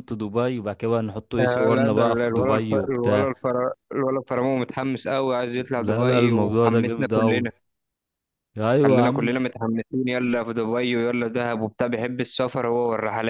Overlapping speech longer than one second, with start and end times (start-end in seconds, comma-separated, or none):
1.4-3.3, 5.8-7.5